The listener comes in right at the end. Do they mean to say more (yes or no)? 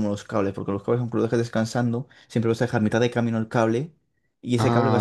yes